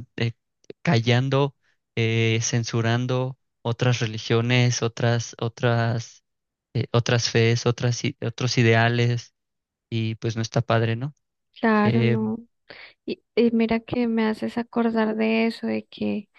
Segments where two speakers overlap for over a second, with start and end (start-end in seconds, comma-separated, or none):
none